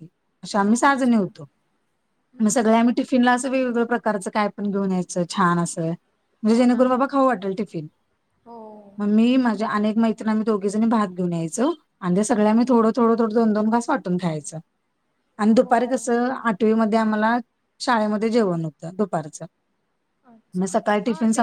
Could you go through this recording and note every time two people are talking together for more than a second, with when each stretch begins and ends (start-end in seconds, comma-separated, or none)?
none